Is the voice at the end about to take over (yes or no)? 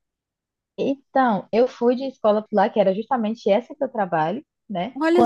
no